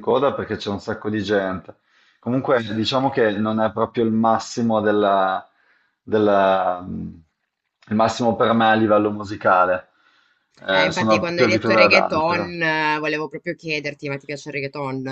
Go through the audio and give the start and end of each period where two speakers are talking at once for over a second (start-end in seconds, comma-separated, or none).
10.7-12.5